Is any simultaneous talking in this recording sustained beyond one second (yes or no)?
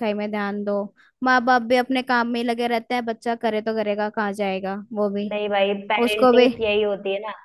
no